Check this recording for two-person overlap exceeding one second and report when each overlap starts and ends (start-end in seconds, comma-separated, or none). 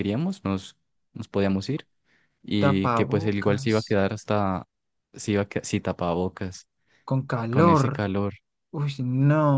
2.6-4.0